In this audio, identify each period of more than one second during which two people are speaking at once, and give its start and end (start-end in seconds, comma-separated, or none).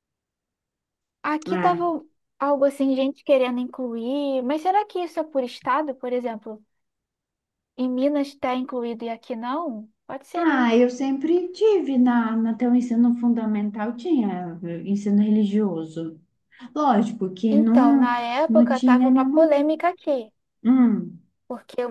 17.5-19.5